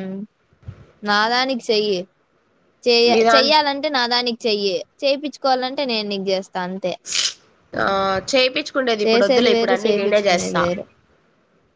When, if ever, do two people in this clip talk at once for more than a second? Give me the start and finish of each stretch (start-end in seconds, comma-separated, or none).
9.0-10.6